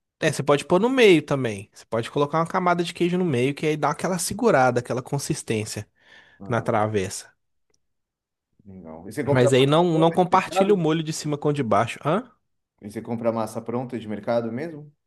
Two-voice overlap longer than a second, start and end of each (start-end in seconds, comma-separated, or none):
9.3-10.8